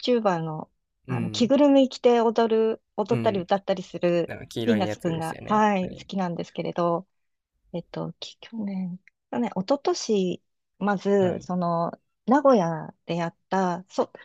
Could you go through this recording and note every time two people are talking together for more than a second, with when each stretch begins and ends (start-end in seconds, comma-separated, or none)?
4.3-6.1